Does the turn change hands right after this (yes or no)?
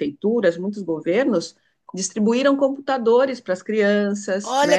yes